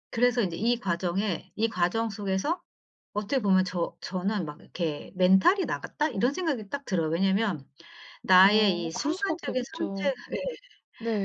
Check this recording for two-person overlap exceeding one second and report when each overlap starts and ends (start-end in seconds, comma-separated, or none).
8.4-10.1